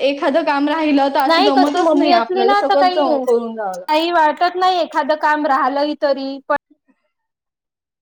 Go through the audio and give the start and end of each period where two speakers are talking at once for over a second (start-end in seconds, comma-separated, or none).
1.3-2.9